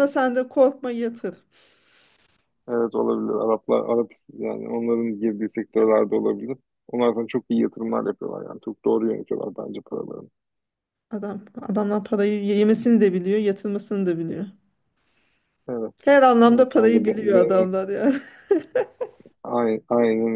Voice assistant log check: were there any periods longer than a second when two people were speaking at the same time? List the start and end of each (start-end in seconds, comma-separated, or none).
16.5-17.7